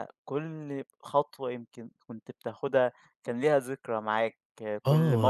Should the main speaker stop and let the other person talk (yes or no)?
yes